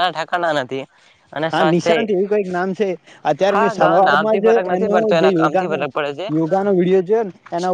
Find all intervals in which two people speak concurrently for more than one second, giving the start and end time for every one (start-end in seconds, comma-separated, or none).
3.5-5.8